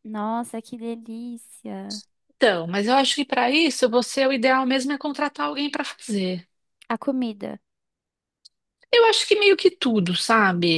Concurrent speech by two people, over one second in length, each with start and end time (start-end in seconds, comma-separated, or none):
none